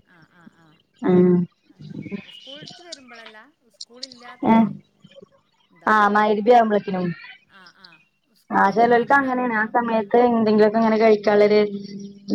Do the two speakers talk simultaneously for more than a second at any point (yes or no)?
yes